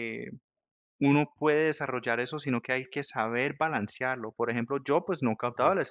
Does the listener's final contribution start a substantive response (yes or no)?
no